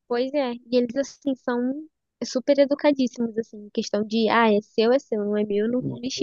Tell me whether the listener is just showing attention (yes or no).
no